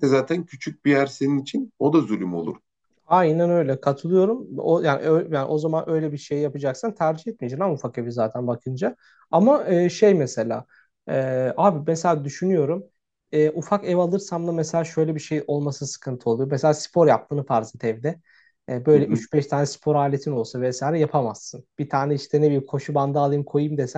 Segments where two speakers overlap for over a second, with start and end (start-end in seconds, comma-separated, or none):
none